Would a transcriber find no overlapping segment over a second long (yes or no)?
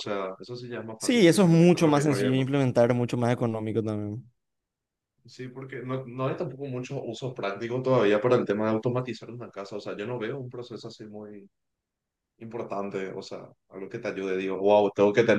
no